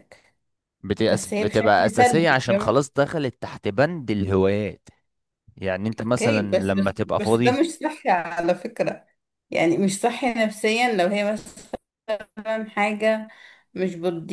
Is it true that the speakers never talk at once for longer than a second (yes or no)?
no